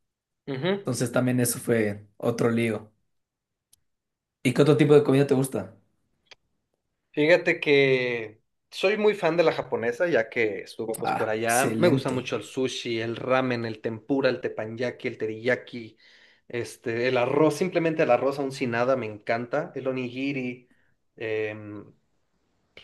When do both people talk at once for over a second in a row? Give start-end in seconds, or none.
11.0-12.3